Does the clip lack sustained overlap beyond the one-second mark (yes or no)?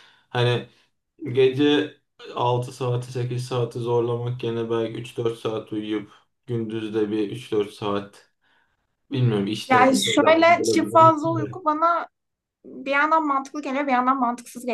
no